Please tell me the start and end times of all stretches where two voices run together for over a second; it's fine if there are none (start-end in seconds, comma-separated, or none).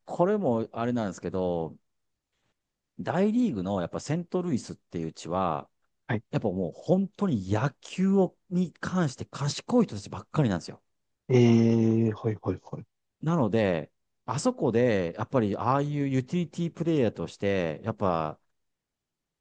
none